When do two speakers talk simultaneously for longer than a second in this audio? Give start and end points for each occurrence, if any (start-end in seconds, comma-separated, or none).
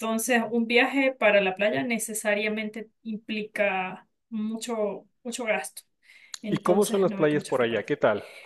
6.5-8.0